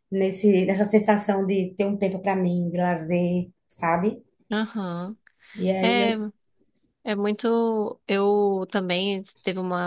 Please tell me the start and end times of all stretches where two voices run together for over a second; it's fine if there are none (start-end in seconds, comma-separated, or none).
none